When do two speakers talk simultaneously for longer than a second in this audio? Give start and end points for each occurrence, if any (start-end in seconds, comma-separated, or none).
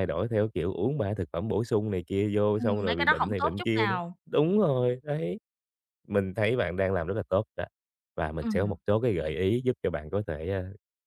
2.6-4.2